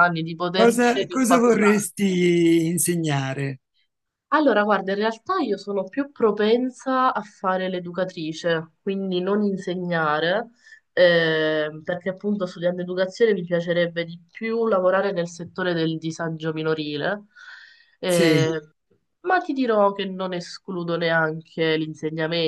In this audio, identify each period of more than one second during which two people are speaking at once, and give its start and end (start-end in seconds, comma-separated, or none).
0.5-1.9